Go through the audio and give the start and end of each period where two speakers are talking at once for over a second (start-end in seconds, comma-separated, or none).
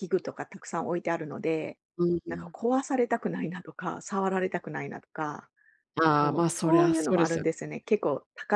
6.2-7.5